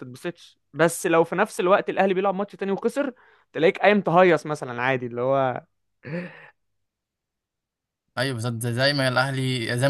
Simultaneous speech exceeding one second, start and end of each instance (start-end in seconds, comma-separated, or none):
none